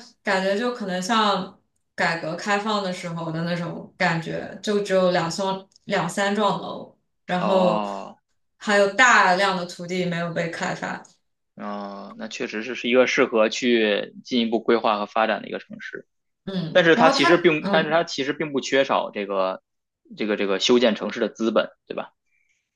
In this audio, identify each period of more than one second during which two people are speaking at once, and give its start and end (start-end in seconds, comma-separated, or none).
16.7-18.0